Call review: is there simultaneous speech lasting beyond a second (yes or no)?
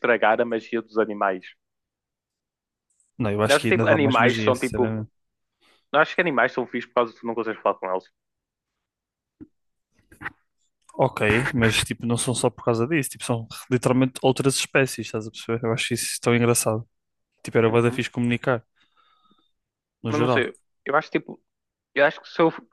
yes